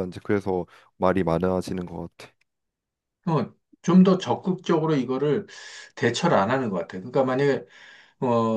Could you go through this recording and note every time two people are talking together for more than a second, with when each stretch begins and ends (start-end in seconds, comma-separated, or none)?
none